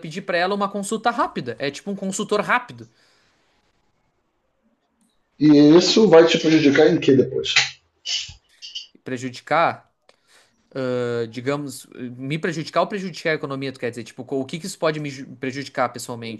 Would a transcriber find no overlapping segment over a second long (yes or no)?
yes